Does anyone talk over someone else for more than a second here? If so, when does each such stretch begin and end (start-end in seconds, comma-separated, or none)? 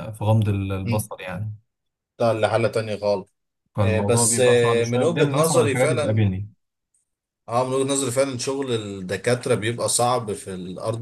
3.8-6.3